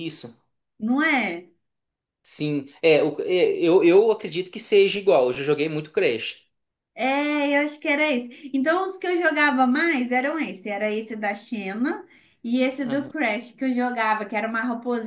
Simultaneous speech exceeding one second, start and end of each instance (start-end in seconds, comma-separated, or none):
none